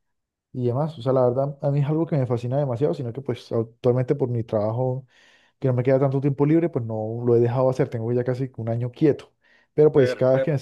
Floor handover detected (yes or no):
no